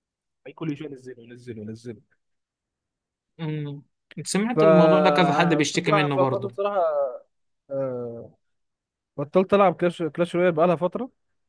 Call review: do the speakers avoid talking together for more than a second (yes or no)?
no